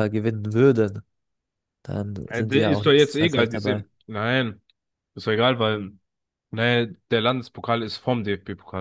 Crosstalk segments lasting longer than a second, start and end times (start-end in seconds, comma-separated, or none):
2.3-3.9